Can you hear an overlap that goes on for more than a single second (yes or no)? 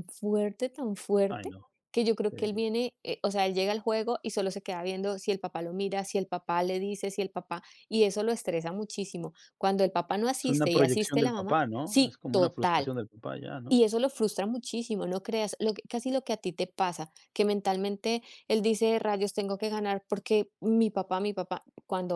yes